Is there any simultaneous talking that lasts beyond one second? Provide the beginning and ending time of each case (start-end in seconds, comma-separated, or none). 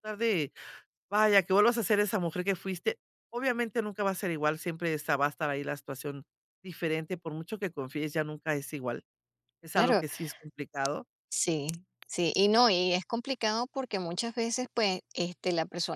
none